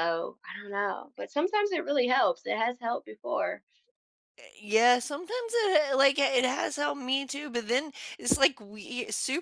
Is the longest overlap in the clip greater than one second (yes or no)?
no